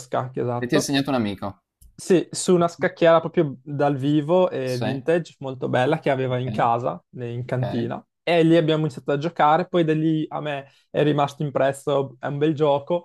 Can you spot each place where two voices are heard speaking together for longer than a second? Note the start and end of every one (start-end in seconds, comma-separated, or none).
none